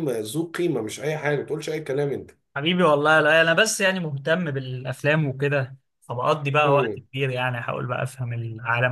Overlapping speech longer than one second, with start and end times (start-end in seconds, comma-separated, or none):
none